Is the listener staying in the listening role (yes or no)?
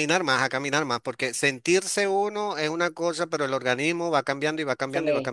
no